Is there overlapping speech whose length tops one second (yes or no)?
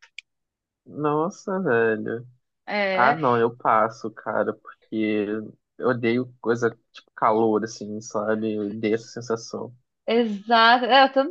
no